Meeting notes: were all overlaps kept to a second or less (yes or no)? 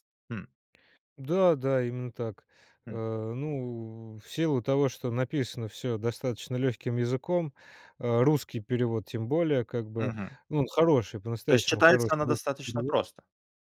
no